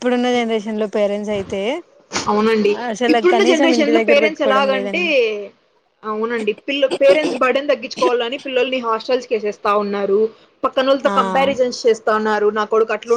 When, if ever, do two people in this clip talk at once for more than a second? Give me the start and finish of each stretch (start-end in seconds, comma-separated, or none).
3.1-5.0